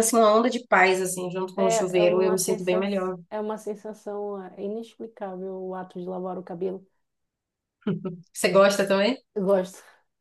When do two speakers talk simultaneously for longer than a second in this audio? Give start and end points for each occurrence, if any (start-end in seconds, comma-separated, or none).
1.5-2.9